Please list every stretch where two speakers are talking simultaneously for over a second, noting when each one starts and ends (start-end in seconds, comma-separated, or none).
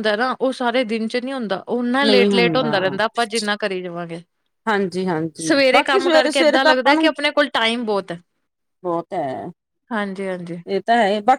5.7-7.1